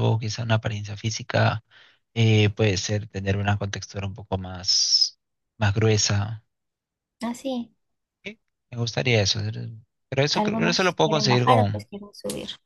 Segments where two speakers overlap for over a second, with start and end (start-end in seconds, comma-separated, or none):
10.3-11.9